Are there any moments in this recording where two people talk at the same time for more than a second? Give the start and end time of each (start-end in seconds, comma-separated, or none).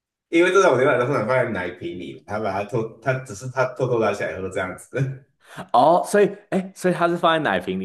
none